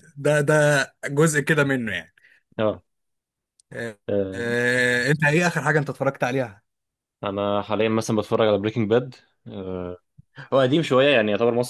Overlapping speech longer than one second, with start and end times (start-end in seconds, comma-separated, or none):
none